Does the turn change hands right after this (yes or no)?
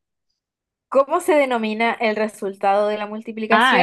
yes